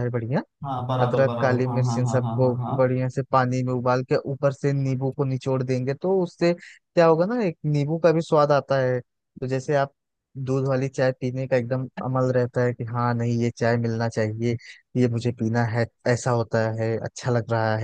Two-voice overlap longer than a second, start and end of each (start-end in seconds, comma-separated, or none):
1.0-2.8